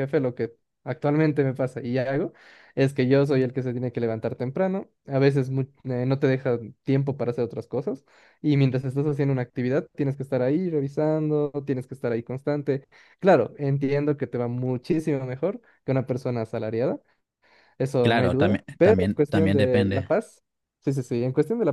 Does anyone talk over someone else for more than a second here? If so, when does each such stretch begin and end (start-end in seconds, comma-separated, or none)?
18.0-20.1